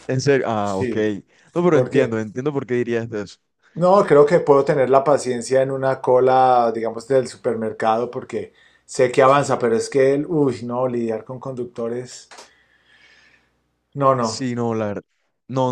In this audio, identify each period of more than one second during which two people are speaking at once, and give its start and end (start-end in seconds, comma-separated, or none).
none